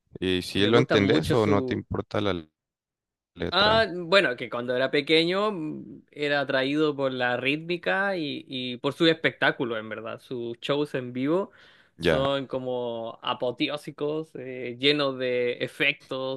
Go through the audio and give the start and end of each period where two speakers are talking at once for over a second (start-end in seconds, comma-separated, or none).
0.5-1.8